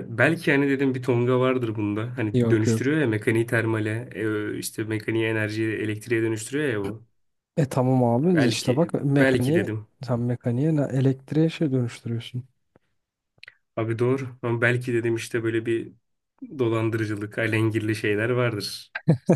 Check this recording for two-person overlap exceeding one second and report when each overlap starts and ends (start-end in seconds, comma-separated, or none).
8.3-9.9